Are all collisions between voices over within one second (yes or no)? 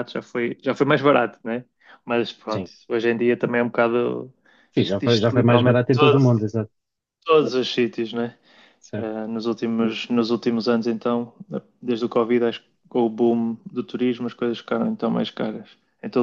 no